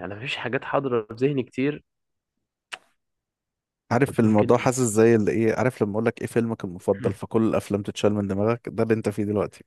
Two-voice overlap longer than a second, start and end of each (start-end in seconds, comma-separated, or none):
none